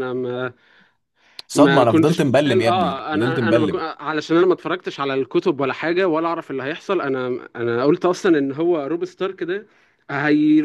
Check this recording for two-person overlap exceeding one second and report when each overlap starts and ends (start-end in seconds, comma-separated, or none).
1.5-3.8